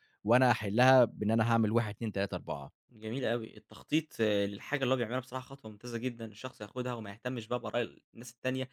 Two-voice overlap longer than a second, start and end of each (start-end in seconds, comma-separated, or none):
none